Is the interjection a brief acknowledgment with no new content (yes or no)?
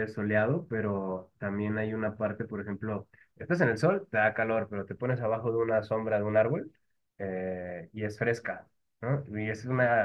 yes